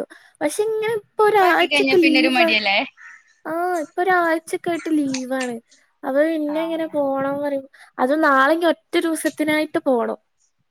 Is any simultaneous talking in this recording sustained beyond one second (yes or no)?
yes